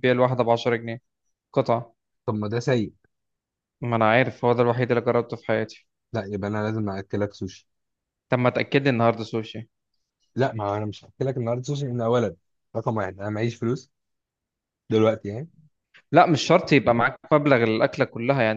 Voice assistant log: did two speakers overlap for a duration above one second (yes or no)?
no